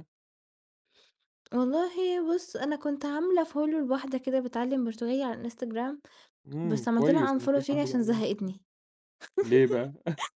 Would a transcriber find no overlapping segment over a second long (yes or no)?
no